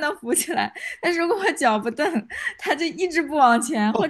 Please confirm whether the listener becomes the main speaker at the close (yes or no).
yes